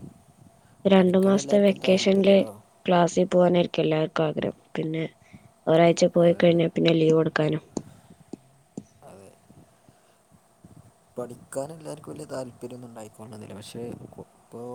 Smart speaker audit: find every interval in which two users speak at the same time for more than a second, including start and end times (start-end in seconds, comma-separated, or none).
1.0-2.4